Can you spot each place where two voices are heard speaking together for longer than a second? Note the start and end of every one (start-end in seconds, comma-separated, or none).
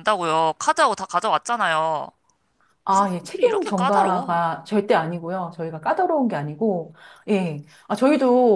2.9-4.4